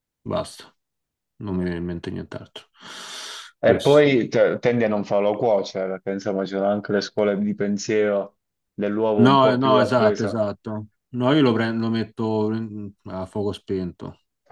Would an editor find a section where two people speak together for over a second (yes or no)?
yes